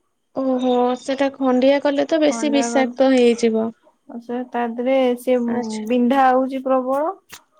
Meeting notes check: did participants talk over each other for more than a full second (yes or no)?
yes